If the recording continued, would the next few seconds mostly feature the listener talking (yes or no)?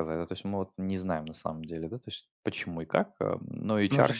yes